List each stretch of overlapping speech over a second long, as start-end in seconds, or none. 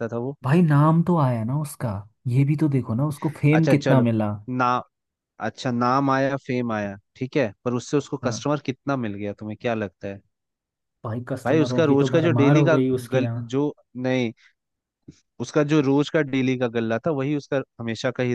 11.4-13.5